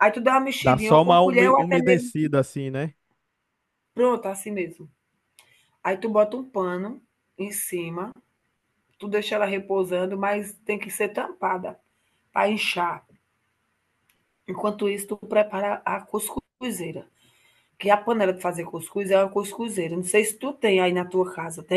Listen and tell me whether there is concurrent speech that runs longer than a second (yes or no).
yes